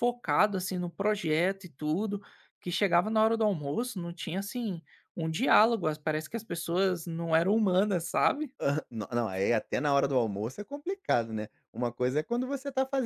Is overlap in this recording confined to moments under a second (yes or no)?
yes